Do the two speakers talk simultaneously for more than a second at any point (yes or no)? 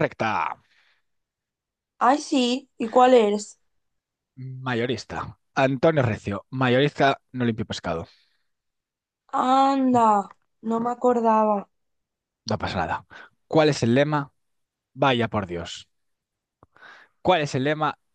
no